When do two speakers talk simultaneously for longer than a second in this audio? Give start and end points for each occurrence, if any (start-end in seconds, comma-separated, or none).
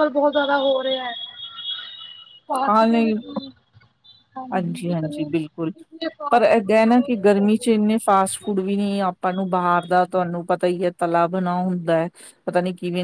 6.3-7.7